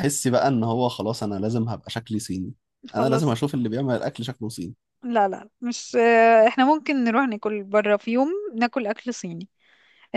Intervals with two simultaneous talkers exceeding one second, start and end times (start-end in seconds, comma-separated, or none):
none